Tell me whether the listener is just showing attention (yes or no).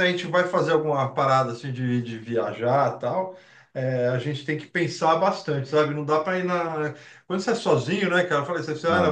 yes